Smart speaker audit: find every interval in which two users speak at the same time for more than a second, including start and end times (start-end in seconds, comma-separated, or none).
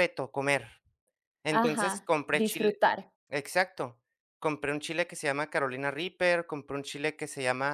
1.5-2.8